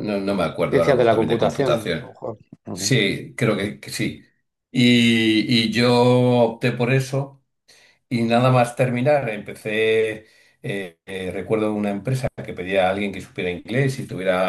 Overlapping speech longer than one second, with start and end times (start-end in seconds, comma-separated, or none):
0.7-2.1